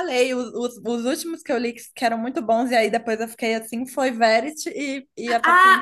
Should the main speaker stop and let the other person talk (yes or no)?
yes